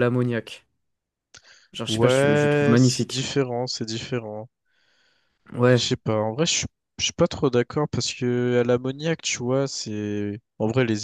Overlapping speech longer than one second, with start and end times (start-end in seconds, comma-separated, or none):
1.9-3.3